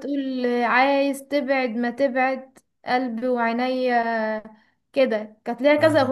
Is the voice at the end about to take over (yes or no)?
no